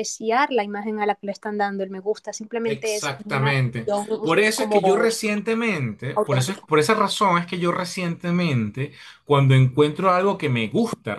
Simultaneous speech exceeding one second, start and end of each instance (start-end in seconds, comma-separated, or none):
2.6-4.8